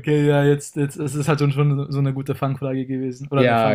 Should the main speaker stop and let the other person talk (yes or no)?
yes